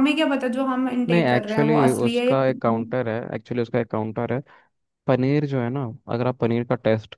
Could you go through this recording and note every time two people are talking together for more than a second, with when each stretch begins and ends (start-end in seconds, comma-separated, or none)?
1.1-2.9